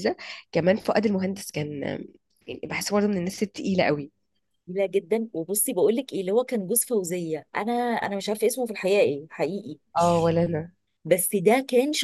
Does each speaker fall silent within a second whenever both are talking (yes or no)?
yes